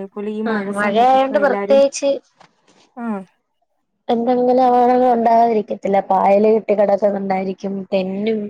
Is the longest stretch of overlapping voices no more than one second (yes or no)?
no